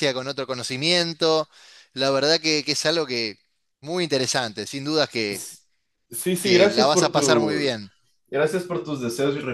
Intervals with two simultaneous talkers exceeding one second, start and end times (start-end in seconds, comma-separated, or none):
6.4-7.7